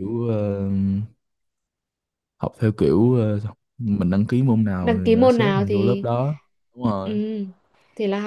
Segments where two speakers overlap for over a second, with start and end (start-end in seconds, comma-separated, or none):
4.8-6.1